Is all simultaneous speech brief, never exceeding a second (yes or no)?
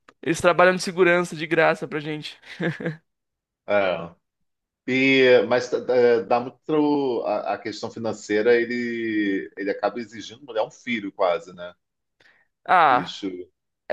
yes